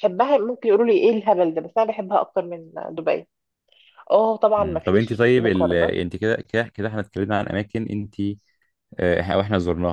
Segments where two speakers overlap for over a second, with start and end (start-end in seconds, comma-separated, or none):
4.6-5.9